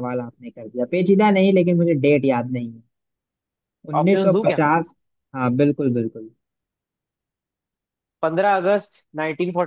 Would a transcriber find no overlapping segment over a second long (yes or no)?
yes